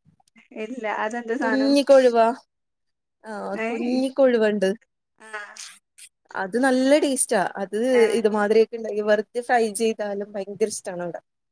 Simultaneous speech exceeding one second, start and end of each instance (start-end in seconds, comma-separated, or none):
none